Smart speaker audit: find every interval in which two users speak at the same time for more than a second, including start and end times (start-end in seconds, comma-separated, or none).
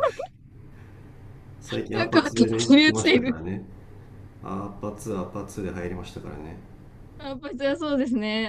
1.9-3.4